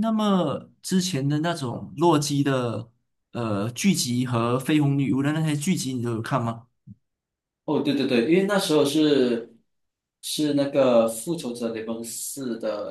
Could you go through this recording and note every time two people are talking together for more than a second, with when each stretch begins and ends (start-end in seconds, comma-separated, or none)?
none